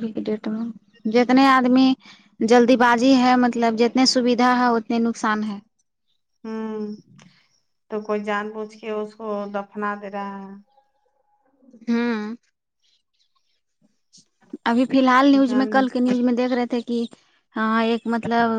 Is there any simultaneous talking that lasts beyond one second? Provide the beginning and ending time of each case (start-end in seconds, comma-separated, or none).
none